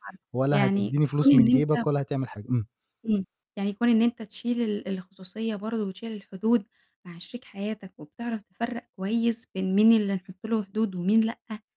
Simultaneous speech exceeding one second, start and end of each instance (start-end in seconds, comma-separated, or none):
0.5-1.9